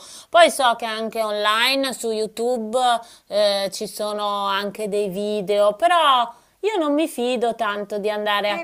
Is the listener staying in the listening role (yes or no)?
no